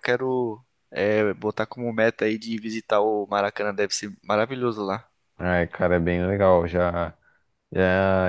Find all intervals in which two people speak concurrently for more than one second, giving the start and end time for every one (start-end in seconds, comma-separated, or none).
none